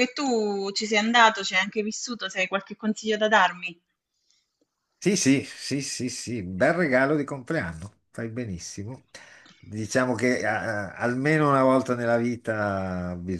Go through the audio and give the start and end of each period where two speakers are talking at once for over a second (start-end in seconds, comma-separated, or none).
none